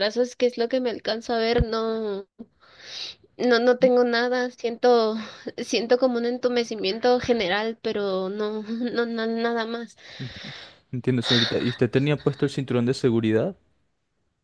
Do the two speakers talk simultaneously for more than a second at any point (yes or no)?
no